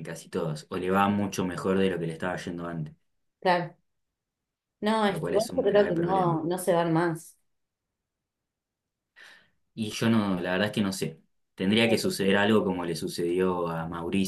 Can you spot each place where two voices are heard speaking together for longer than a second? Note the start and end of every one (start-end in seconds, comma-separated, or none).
5.1-6.4